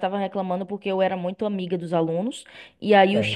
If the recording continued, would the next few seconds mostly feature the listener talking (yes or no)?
no